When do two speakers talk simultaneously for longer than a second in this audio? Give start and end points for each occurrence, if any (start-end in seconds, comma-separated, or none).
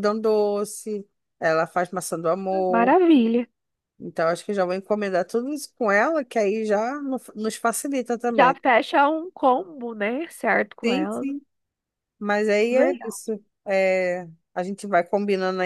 none